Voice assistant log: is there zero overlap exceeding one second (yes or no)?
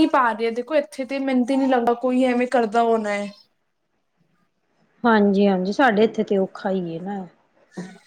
yes